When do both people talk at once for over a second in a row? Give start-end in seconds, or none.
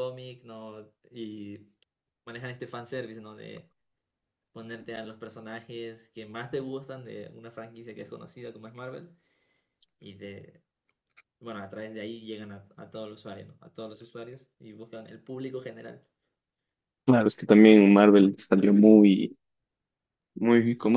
none